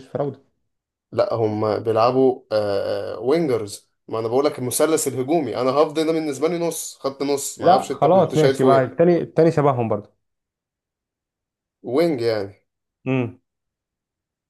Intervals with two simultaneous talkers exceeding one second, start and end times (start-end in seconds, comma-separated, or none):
7.6-9.0